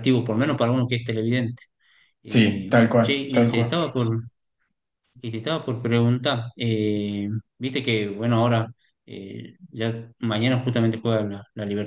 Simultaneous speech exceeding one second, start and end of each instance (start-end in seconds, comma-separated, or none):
2.2-3.8